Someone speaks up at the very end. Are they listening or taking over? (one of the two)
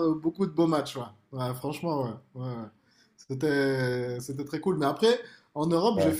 listening